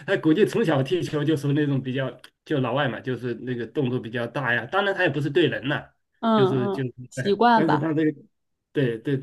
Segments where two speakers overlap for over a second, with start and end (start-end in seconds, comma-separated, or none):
6.3-7.9